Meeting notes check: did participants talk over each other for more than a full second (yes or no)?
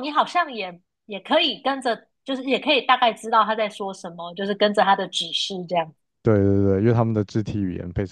no